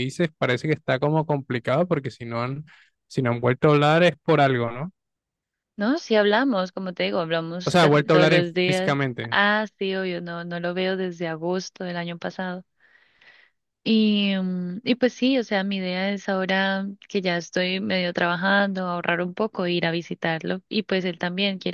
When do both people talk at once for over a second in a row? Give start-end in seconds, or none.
7.6-9.4